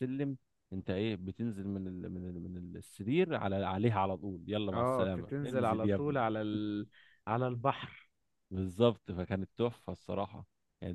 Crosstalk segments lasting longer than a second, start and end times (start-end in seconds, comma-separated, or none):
4.7-6.2